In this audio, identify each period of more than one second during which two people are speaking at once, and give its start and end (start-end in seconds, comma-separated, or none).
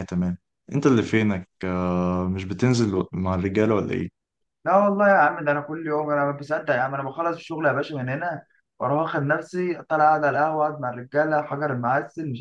none